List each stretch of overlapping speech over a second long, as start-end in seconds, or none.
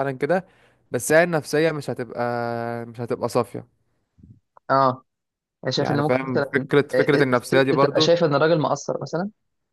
5.8-8.1